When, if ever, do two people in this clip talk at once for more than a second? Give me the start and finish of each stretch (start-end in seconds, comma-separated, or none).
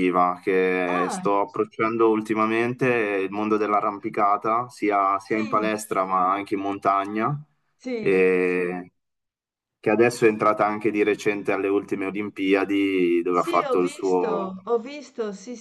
13.3-14.6